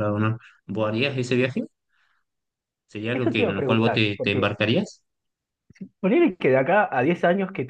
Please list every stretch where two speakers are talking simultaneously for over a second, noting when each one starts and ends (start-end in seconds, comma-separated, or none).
3.1-4.5